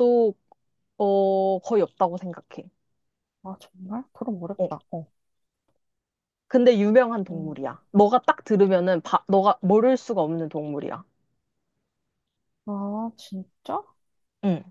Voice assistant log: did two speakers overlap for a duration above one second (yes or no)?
no